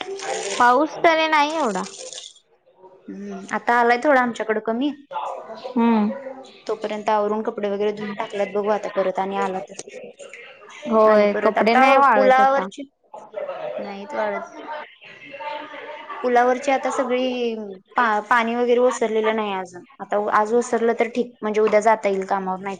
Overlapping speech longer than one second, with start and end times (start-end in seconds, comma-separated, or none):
none